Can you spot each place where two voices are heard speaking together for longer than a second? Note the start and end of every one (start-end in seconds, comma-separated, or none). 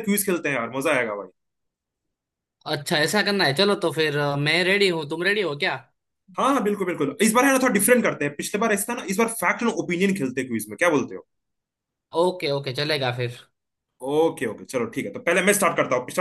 none